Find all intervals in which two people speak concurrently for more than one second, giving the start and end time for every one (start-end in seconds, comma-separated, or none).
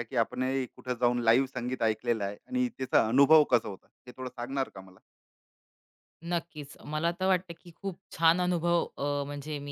none